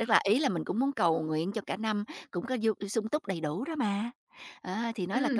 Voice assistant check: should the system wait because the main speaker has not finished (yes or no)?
no